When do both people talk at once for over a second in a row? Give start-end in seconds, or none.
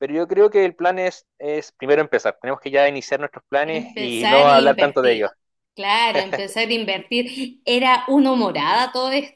3.6-5.2